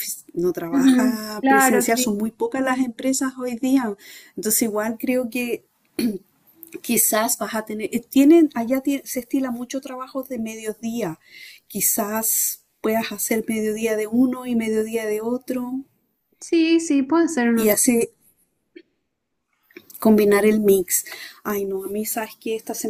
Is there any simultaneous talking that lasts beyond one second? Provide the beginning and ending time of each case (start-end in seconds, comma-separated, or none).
0.7-2.2